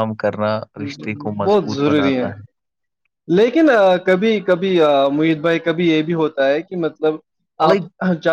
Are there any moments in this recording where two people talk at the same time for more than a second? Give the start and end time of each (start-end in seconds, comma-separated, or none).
0.6-2.2